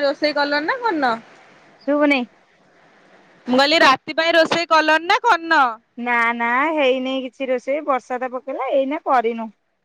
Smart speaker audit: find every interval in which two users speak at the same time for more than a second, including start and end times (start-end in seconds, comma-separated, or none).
none